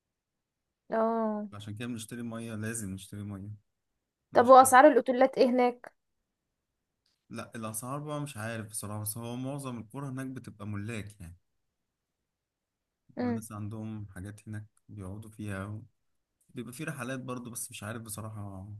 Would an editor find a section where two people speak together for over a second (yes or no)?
no